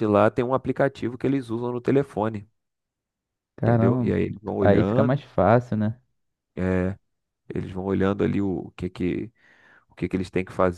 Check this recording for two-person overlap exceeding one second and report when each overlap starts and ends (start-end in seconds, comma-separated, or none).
3.6-5.2